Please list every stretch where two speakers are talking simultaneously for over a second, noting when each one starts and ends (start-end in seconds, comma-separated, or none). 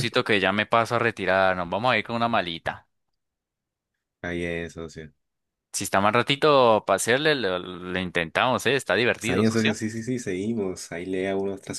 none